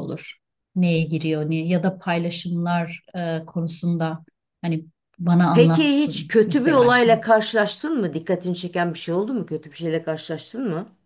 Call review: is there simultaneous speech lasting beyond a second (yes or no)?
yes